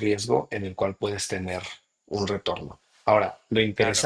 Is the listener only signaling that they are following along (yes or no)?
no